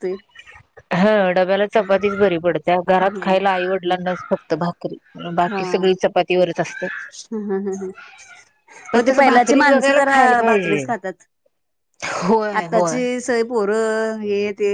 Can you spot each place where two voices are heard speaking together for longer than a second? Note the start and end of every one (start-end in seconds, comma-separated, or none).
8.9-10.8